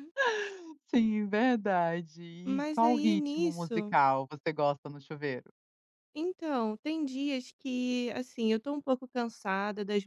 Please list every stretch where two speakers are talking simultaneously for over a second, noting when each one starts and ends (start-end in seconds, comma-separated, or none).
2.5-4.0